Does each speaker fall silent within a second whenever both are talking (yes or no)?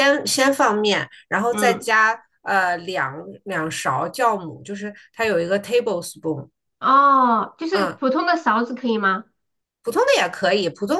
yes